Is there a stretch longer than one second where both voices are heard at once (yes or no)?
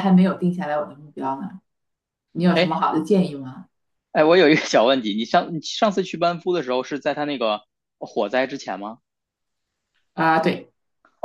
no